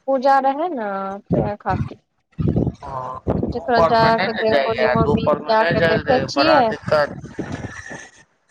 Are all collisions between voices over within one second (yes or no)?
no